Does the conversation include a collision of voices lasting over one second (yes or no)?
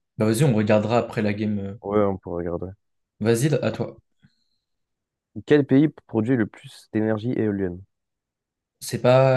no